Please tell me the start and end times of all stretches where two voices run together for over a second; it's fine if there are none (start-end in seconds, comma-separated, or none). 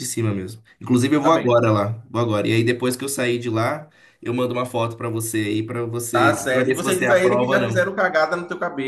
6.1-7.9